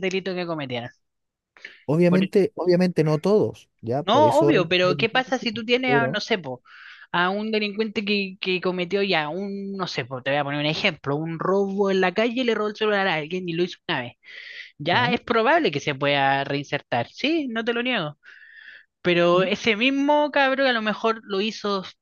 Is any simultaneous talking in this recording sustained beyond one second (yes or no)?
yes